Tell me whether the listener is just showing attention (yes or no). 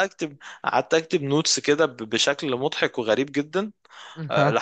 yes